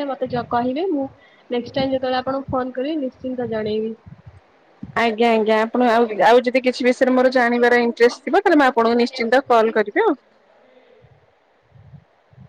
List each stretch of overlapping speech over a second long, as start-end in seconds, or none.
7.2-10.1